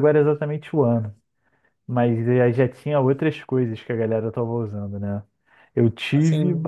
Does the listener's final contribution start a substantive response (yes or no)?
no